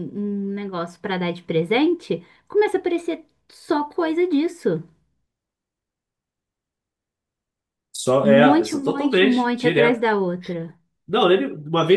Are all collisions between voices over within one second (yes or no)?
no